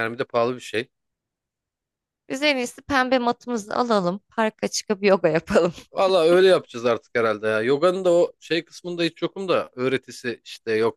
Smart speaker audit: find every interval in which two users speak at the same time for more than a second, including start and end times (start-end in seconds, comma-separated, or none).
none